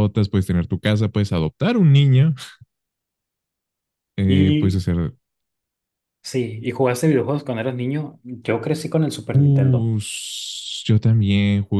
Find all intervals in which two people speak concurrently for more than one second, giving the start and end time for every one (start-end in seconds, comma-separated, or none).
none